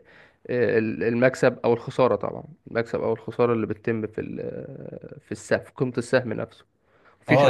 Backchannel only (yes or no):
no